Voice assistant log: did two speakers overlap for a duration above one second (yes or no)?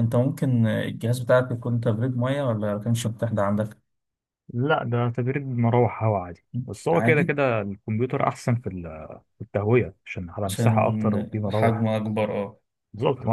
yes